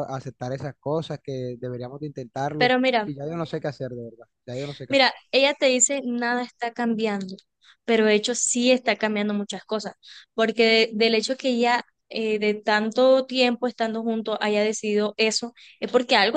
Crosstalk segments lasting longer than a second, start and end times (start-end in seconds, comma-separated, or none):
none